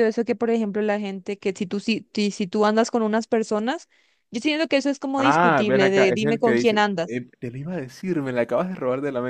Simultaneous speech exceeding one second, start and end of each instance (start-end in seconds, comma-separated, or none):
5.2-7.2